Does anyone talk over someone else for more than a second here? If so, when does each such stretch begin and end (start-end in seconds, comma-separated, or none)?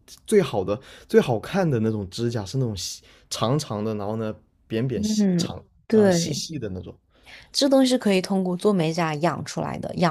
4.9-6.5